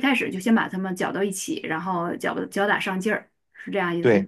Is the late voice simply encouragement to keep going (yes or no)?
no